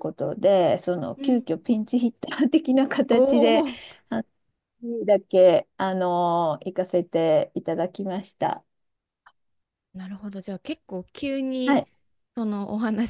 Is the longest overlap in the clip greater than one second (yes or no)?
no